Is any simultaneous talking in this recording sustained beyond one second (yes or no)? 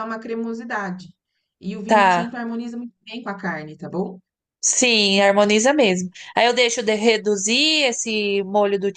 no